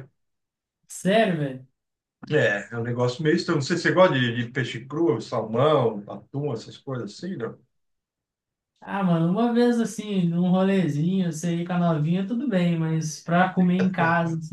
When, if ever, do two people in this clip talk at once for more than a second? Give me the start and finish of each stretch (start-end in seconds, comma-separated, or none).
none